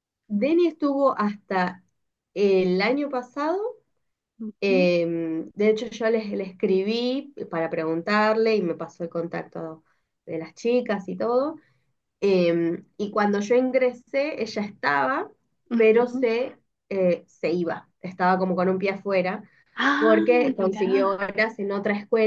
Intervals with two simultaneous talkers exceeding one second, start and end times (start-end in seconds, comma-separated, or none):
19.9-21.2